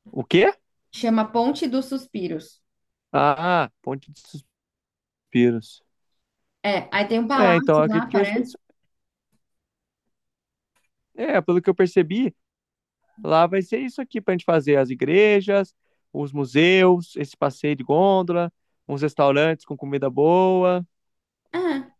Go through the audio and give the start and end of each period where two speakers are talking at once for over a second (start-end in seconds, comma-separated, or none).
7.3-8.6